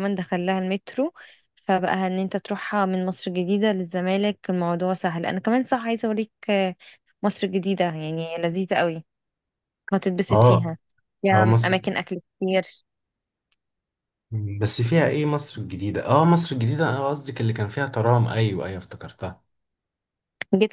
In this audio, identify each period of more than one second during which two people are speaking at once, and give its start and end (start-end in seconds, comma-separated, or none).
none